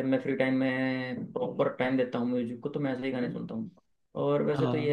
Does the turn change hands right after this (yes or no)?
no